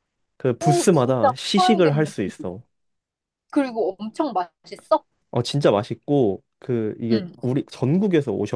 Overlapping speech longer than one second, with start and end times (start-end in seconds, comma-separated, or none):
0.6-2.0